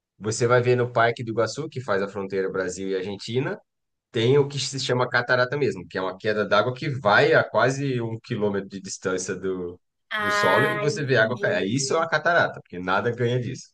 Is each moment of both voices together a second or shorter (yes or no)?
no